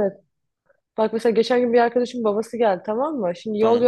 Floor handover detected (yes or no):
no